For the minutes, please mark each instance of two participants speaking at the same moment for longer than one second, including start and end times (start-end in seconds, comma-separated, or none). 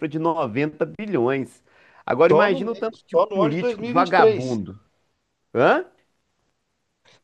2.3-4.6